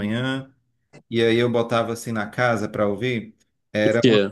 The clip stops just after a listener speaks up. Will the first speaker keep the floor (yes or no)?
yes